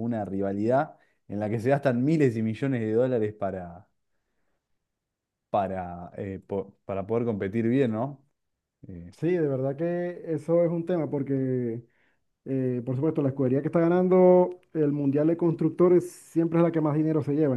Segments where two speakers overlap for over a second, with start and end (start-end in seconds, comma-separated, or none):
none